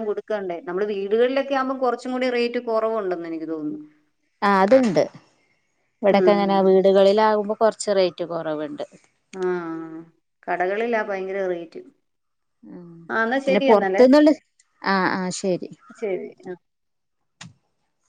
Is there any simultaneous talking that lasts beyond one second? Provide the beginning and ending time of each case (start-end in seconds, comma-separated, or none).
none